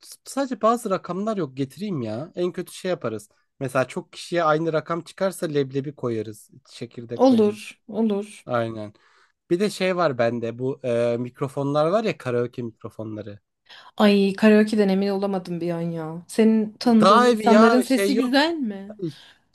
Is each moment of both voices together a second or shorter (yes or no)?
no